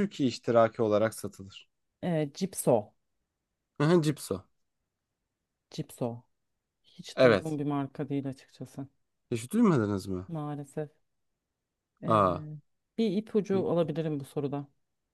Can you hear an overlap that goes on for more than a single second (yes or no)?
no